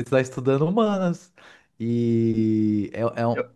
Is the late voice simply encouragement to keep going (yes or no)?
yes